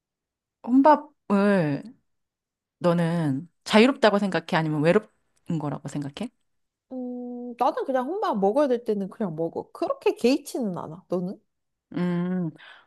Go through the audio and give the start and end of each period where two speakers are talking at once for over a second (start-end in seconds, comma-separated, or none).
none